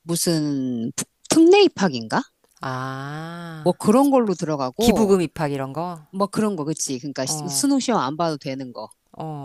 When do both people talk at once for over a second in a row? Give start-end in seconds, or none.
none